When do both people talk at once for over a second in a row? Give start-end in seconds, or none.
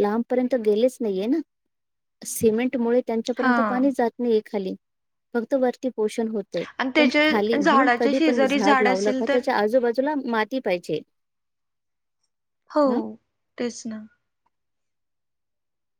6.8-9.4